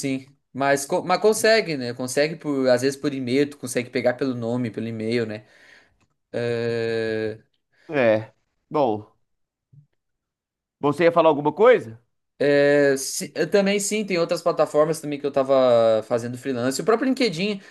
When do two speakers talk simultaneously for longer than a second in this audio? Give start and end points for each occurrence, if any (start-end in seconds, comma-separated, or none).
none